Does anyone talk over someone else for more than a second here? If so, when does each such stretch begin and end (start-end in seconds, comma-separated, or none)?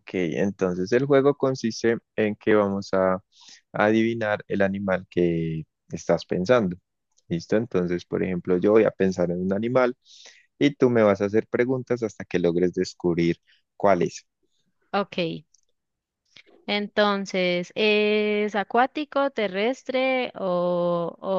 none